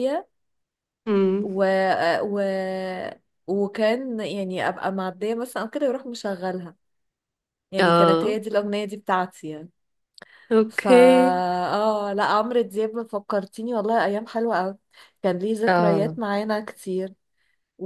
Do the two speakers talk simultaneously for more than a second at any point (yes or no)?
no